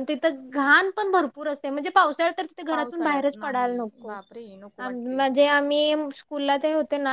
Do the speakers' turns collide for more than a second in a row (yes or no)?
yes